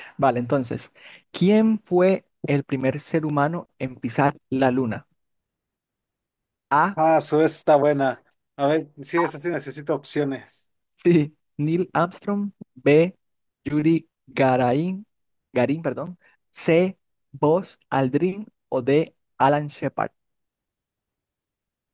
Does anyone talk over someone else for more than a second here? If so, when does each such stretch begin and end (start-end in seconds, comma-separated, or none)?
none